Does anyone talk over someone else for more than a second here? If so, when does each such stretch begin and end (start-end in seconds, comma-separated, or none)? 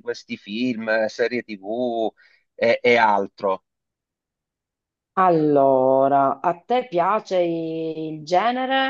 none